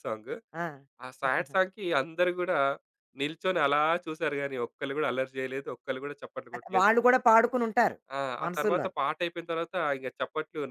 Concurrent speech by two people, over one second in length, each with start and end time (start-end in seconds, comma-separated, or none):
none